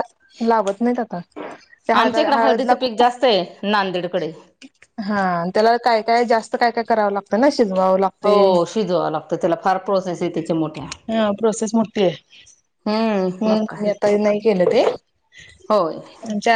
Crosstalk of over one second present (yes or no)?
no